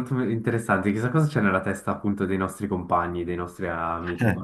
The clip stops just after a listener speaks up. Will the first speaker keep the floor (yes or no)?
yes